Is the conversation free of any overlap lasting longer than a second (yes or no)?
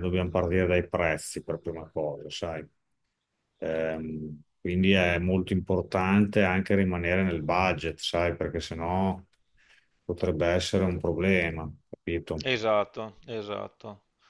yes